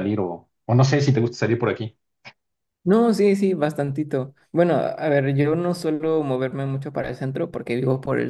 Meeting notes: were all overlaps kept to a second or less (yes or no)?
yes